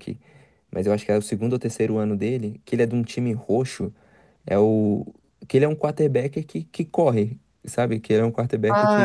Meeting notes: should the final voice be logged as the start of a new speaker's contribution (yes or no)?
yes